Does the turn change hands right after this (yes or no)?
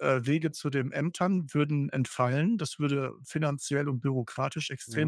no